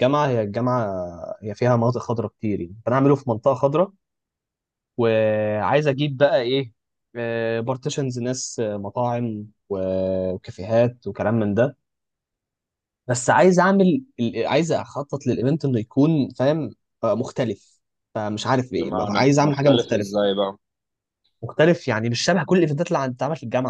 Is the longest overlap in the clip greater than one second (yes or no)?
yes